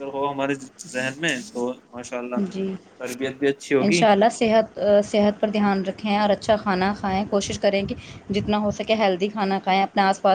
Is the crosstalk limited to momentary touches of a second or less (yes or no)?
yes